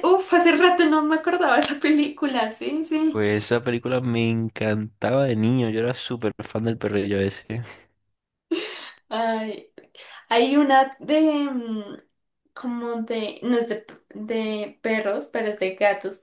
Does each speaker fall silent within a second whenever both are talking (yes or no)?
yes